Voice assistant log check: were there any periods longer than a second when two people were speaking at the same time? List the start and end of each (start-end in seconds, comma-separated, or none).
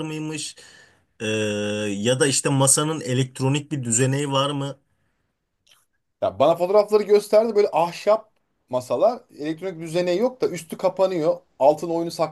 none